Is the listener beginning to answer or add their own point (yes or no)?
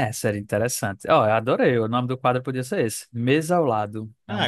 yes